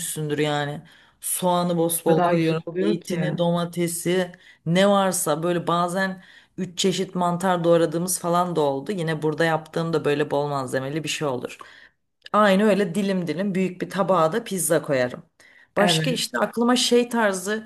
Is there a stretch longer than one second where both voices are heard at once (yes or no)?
yes